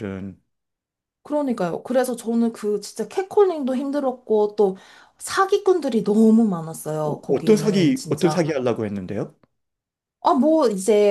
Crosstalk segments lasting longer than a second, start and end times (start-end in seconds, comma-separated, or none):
7.0-8.4